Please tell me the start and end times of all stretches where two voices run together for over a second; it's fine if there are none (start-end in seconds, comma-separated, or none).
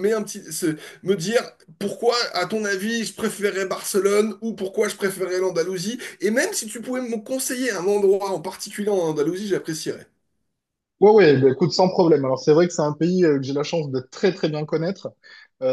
none